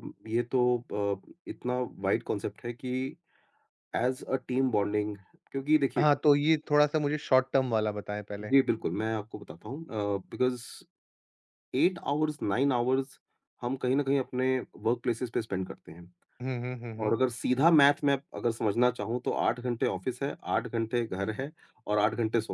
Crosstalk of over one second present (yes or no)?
no